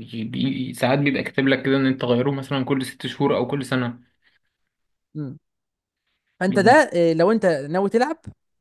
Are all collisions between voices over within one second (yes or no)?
yes